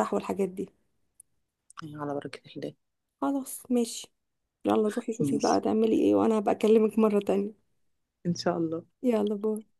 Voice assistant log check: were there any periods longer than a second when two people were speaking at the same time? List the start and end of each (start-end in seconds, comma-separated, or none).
none